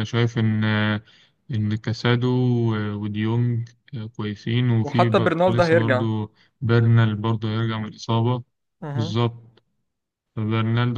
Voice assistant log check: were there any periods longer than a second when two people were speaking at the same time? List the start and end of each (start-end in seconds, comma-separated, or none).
4.8-6.1